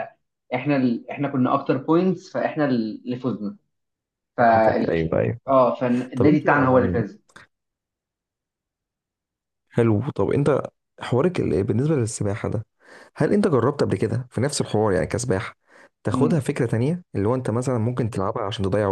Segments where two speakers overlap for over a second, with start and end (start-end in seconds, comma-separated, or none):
none